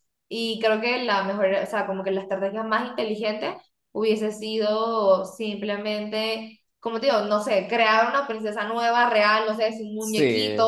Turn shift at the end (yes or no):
yes